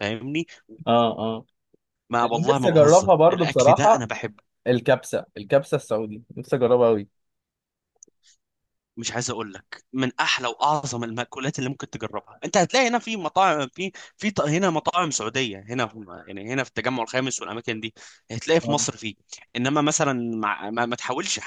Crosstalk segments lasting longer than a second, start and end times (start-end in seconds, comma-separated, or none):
2.2-4.1